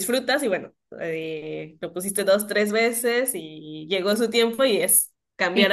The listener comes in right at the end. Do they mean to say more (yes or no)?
yes